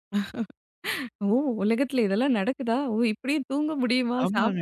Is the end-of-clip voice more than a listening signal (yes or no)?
yes